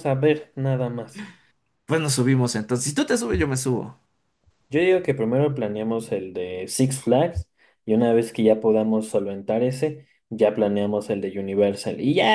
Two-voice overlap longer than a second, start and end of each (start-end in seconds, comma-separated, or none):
none